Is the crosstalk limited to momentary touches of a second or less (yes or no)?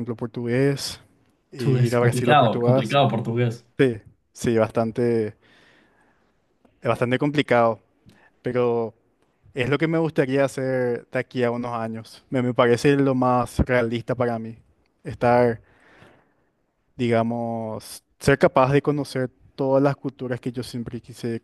no